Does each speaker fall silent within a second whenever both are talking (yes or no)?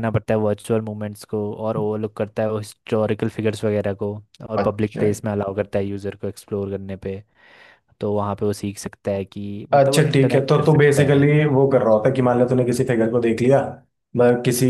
no